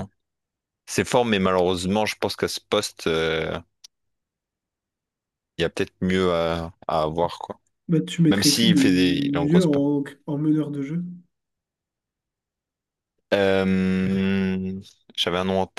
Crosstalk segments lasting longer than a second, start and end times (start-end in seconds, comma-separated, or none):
8.3-9.7